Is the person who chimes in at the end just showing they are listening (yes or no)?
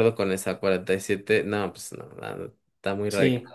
no